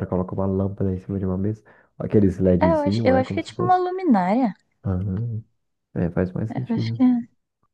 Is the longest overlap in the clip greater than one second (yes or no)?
yes